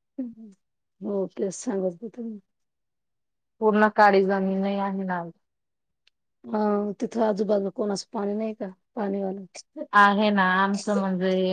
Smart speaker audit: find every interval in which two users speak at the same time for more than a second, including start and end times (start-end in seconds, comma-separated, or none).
none